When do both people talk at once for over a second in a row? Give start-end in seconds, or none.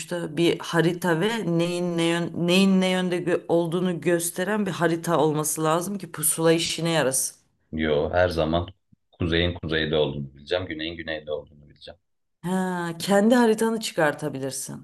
none